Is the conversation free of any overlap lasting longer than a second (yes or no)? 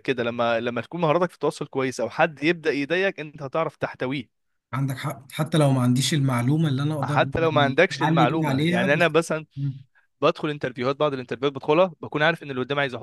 no